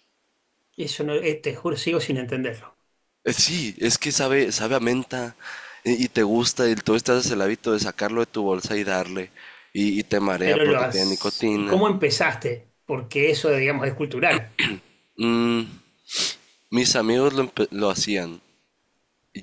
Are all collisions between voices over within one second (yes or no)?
no